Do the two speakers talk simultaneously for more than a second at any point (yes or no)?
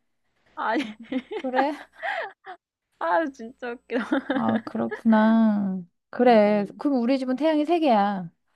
no